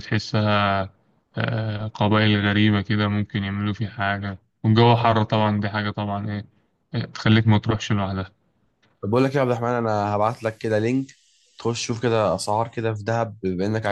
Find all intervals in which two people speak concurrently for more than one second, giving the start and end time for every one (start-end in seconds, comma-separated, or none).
none